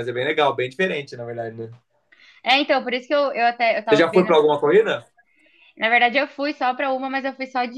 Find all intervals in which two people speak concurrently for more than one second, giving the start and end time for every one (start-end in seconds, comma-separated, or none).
none